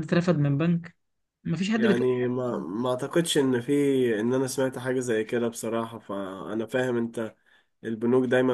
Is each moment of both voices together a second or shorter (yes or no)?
yes